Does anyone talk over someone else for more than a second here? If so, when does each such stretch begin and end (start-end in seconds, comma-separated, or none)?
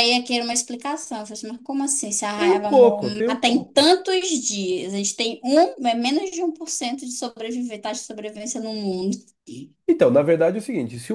2.4-3.9